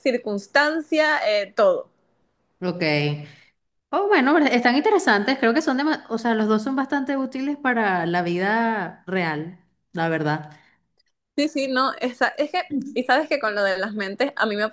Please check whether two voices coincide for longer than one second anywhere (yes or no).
no